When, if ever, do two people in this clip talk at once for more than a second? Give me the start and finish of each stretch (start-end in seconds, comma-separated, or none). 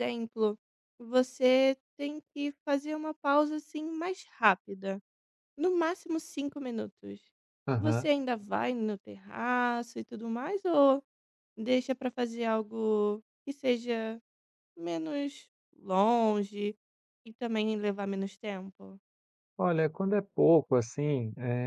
none